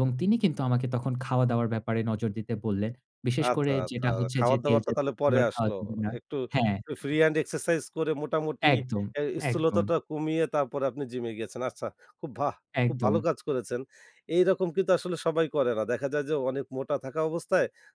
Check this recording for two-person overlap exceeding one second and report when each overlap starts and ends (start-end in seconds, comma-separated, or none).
3.4-5.7